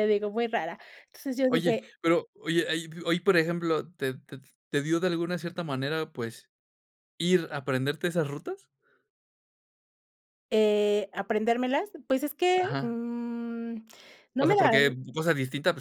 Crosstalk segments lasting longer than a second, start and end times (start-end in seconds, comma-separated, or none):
none